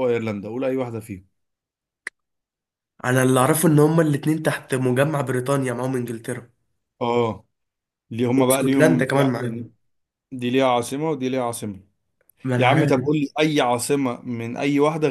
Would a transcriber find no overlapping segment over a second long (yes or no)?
no